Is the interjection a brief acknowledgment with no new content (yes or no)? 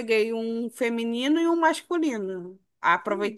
yes